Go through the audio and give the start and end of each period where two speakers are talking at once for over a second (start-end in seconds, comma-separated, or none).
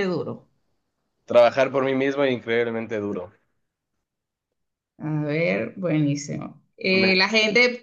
none